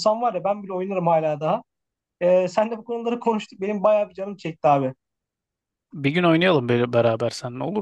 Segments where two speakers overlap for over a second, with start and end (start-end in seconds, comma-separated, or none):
none